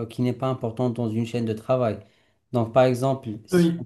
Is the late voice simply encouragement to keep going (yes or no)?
yes